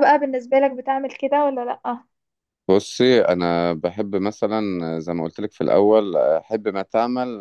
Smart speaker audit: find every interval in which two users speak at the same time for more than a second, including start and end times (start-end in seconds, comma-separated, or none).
none